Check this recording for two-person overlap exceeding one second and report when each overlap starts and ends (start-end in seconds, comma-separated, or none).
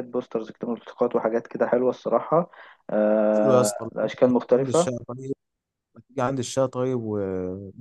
3.3-4.9